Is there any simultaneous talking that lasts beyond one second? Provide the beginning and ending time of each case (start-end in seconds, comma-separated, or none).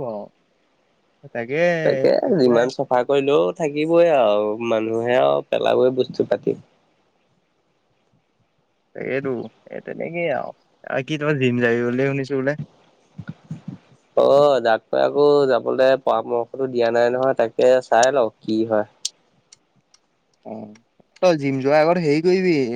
none